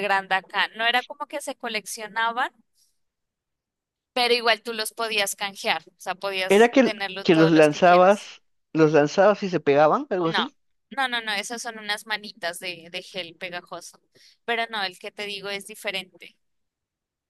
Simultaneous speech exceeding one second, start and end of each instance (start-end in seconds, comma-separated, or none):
6.5-8.3